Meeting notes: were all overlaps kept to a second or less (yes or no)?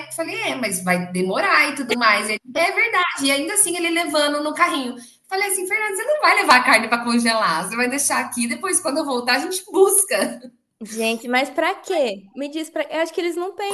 yes